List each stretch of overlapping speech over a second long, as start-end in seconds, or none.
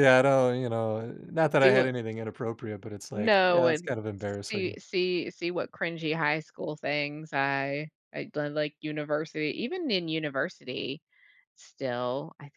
3.1-4.8